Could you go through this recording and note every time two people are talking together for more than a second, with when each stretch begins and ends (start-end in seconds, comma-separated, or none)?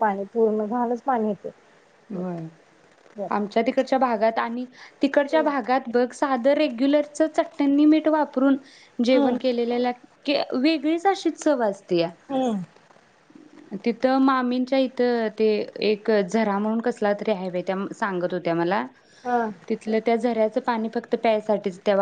none